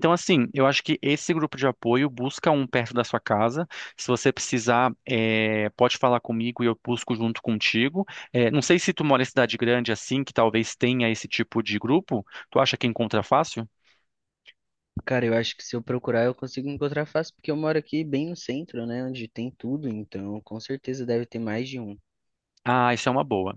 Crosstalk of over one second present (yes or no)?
no